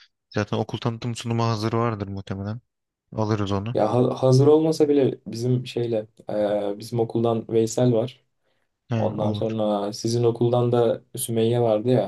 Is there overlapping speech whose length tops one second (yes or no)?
no